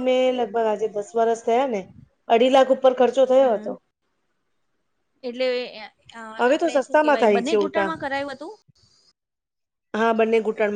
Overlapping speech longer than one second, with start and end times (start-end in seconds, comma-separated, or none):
6.4-7.9